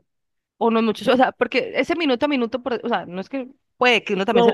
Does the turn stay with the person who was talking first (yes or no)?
no